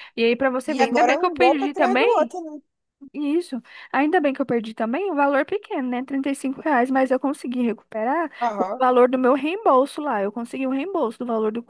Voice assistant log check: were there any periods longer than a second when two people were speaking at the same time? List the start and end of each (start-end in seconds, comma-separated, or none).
0.7-2.3